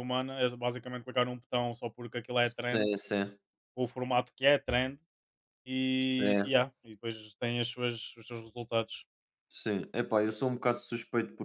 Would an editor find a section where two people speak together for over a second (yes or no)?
no